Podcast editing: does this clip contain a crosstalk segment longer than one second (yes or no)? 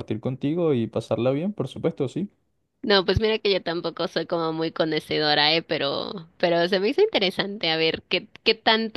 no